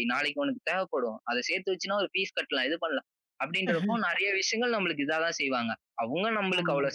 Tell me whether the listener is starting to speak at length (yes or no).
no